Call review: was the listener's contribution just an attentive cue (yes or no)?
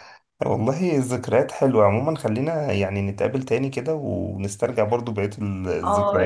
no